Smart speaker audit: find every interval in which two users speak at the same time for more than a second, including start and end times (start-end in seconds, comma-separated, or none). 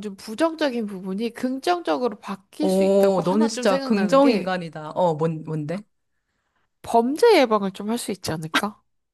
2.6-4.6